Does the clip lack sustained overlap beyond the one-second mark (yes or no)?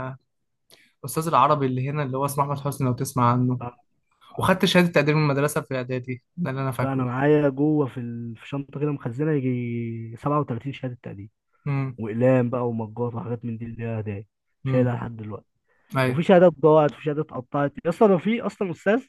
yes